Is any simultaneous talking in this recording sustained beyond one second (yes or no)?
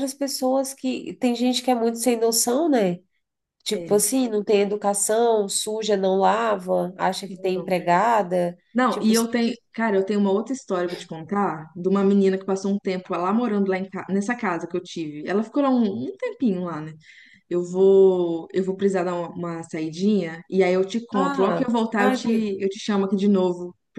yes